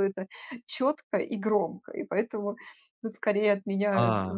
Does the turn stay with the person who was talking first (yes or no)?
yes